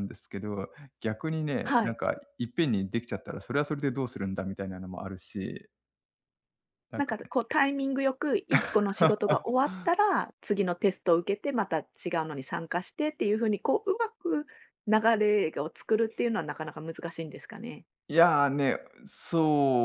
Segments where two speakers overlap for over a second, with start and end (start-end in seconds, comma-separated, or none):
none